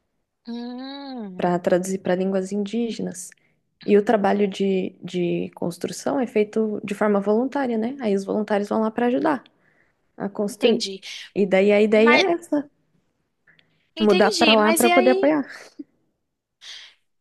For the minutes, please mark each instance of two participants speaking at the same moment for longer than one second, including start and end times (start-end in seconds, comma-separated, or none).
14.0-15.3